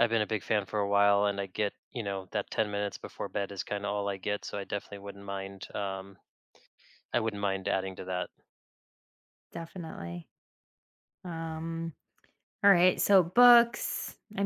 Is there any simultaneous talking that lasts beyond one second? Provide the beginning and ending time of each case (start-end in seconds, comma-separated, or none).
none